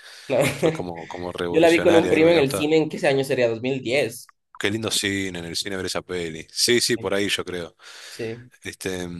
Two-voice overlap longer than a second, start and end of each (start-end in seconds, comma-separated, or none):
1.5-2.7